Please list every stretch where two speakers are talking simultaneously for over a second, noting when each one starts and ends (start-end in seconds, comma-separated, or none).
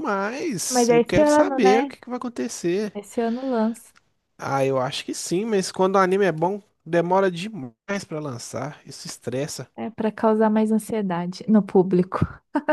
0.7-1.9